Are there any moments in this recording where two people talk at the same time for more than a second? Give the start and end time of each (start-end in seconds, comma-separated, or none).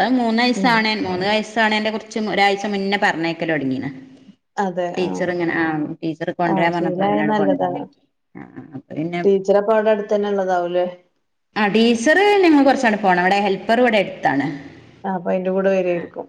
6.5-7.8